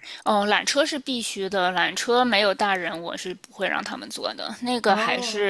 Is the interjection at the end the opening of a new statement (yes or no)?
no